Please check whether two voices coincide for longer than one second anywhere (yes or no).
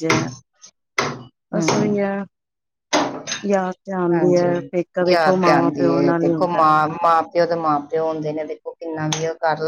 yes